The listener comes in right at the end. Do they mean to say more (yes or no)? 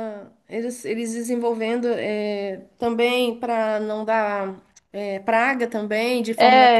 yes